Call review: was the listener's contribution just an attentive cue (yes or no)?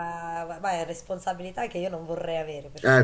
no